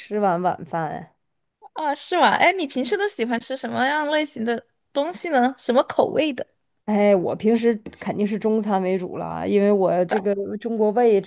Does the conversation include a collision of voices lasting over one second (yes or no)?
no